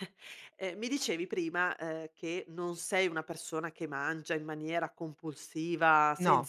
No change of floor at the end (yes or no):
yes